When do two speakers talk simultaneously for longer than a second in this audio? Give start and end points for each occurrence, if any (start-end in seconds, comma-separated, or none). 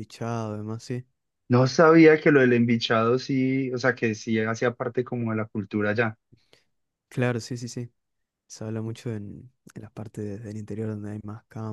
none